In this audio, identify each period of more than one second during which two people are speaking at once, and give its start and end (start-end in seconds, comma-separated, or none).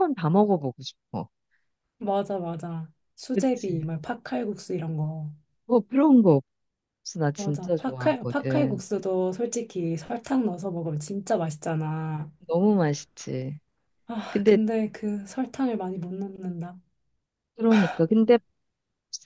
7.4-8.8